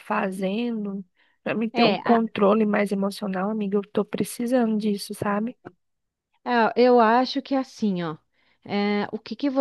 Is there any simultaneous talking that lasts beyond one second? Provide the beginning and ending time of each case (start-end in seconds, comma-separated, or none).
none